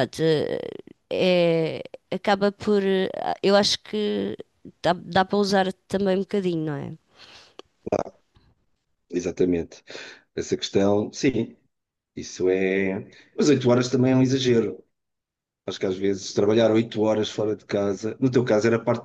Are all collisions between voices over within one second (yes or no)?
yes